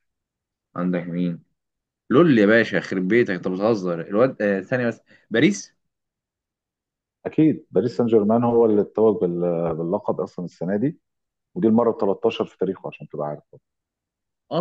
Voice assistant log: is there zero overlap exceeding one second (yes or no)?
yes